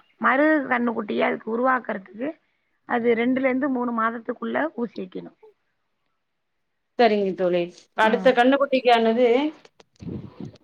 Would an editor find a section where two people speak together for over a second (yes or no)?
no